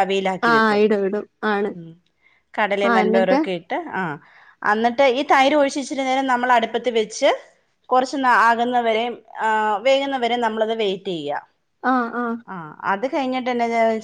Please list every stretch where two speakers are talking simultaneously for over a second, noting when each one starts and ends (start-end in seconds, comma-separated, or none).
none